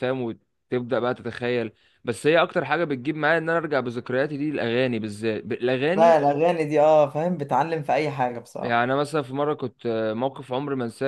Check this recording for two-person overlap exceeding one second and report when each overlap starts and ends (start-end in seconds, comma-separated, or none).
none